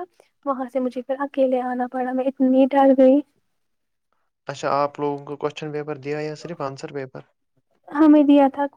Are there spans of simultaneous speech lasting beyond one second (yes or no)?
no